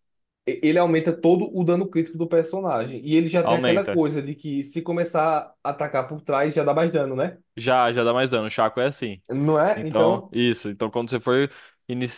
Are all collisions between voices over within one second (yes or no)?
yes